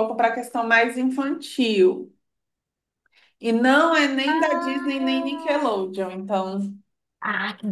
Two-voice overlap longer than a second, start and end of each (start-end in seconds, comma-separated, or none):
4.3-5.7